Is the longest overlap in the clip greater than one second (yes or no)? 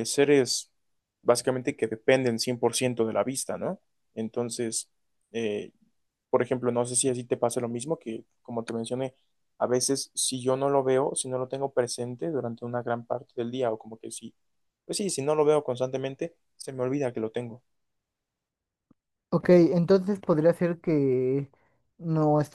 no